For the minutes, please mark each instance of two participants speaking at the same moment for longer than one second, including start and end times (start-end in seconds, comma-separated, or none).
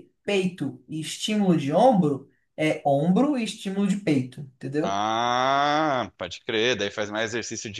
none